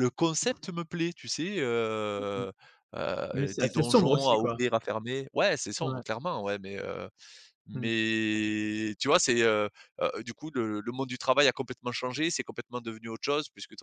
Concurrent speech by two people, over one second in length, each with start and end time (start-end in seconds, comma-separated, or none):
3.3-4.6